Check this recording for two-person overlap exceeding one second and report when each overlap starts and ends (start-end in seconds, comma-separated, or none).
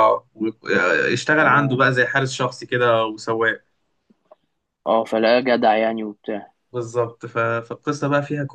none